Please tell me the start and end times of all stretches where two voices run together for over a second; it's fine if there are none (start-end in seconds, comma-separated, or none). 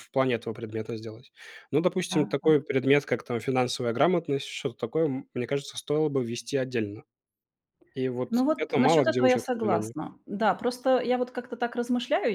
8.3-9.9